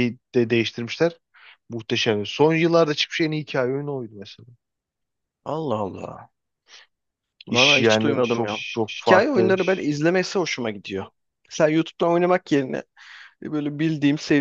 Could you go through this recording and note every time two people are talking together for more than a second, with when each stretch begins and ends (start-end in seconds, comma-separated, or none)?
7.5-9.6